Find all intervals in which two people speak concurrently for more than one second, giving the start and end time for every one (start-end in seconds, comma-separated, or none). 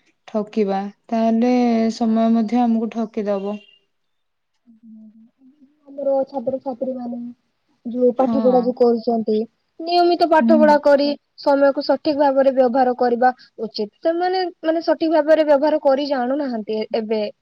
none